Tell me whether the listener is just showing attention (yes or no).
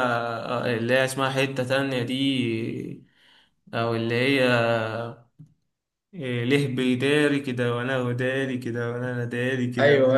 no